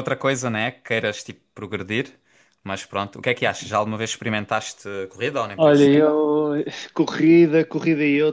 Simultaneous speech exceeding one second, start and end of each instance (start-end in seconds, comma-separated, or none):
none